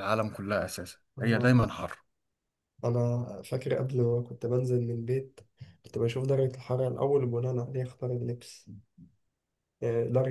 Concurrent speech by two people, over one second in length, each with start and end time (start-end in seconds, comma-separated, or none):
none